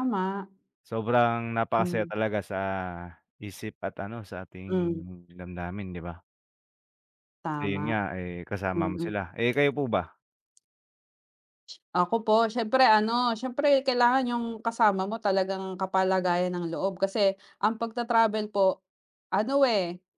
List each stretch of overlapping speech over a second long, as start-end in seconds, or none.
none